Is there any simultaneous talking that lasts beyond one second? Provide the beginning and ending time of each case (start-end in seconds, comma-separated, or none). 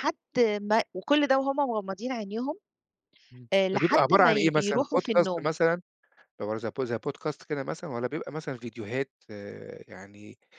3.5-5.5